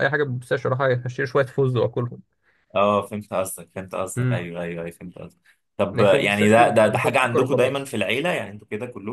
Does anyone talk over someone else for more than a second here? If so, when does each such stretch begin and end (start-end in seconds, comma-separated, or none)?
5.9-7.9